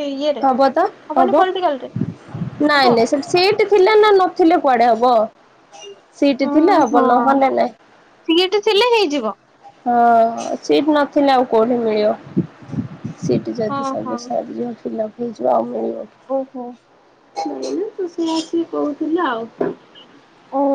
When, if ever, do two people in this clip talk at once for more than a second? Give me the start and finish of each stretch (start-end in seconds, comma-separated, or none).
none